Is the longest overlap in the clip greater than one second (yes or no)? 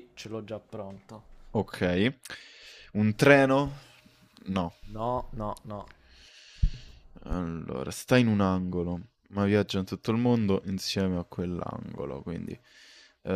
no